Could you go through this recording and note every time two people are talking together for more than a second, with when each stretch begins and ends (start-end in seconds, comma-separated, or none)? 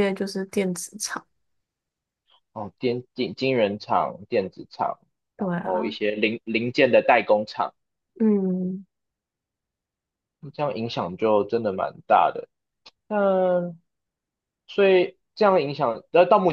none